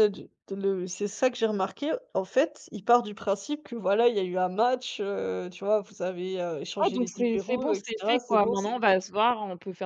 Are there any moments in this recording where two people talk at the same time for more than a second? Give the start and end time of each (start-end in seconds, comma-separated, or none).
6.8-9.0